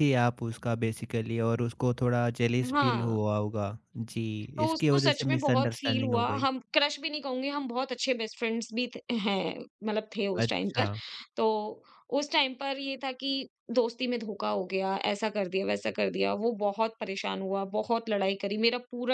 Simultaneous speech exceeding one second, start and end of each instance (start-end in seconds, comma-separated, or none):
4.6-6.5